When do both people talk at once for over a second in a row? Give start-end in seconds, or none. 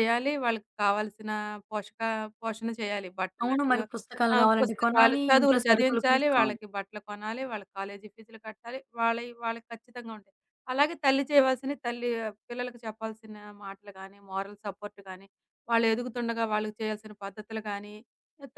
4.3-6.6